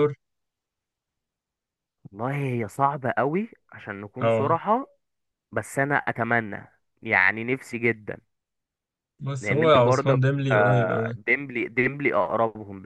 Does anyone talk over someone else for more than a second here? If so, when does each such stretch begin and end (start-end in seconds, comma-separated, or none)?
9.4-11.2